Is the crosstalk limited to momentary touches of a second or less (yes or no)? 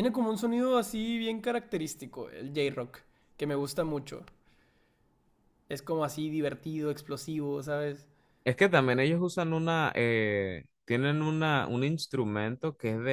yes